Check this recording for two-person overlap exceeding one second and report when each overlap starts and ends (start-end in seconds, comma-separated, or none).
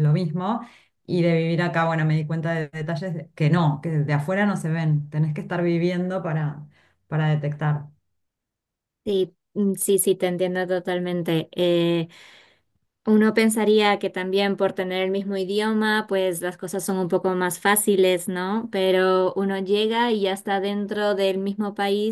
none